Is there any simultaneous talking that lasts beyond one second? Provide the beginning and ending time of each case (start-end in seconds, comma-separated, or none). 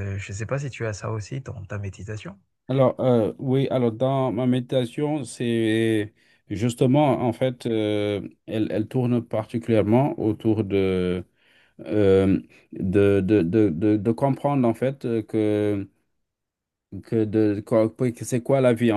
none